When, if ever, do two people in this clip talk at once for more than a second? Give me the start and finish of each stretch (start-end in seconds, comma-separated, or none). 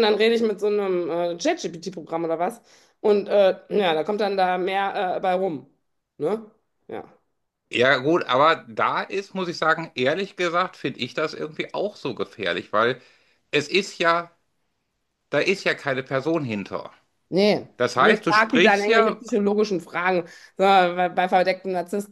17.8-19.2